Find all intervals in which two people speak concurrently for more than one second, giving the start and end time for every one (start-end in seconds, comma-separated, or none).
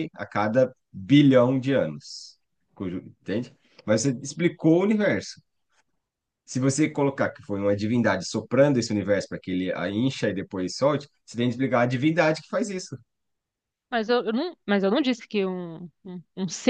none